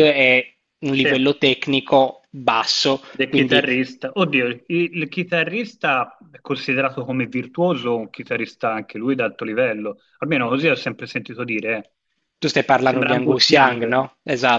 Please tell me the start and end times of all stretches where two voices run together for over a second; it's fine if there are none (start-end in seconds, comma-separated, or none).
12.8-14.0